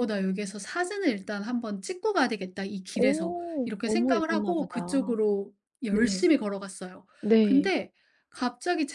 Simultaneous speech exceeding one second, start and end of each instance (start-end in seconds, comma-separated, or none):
2.9-5.2